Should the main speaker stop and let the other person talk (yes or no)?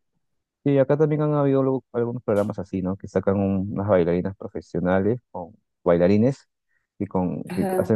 no